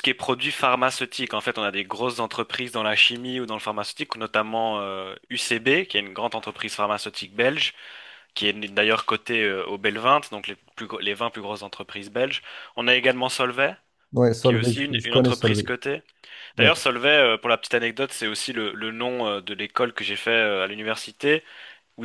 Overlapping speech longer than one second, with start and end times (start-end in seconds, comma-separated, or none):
14.4-15.7